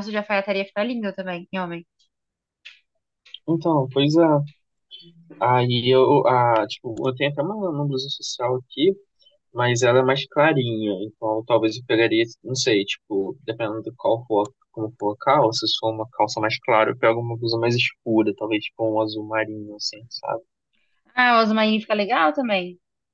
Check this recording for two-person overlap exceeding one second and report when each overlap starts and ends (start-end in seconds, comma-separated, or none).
none